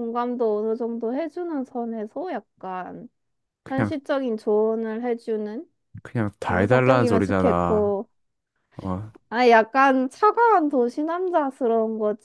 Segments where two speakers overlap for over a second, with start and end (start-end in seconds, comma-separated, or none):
6.4-8.0